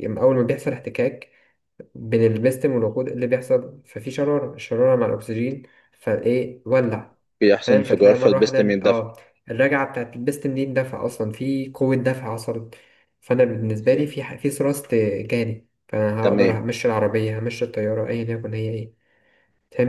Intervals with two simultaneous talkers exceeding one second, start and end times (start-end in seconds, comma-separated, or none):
7.6-9.0